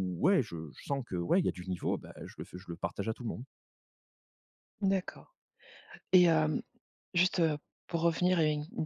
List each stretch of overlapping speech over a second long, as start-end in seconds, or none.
none